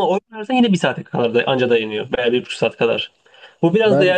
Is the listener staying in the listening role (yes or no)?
yes